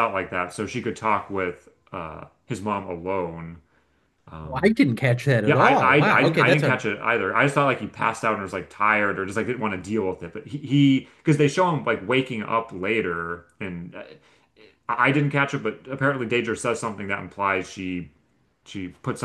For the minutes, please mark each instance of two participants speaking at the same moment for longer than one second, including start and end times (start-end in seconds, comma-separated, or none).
5.5-6.8